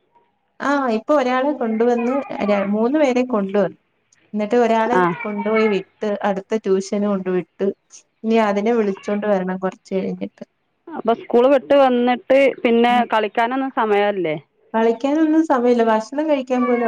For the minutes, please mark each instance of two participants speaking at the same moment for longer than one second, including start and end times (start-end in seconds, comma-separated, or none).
none